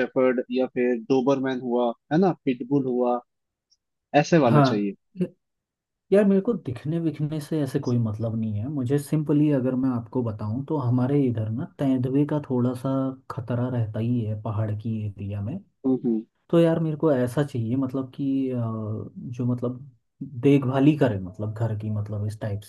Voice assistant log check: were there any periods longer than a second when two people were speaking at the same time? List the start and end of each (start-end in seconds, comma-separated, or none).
none